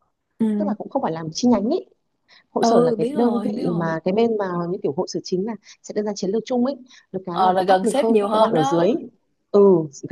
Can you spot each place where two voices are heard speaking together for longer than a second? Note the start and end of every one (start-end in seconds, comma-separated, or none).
2.6-3.9, 7.3-8.9